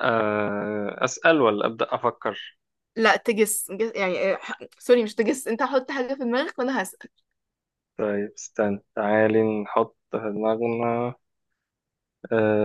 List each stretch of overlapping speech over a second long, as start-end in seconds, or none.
none